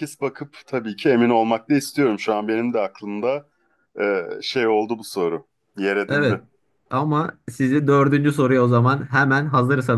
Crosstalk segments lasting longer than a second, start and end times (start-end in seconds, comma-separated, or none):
none